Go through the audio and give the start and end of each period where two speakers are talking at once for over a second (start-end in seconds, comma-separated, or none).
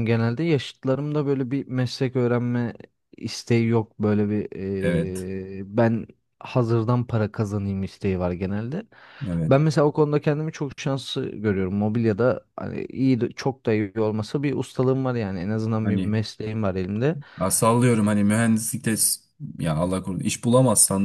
none